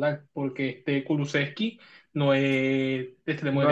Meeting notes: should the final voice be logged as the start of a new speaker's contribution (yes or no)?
yes